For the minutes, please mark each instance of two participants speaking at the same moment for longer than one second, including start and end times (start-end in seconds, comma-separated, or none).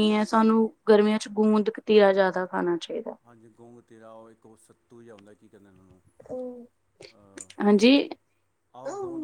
none